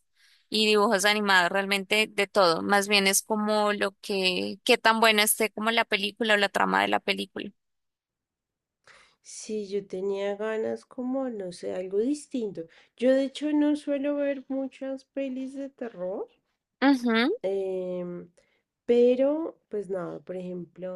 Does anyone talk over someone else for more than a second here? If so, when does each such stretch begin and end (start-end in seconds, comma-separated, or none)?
none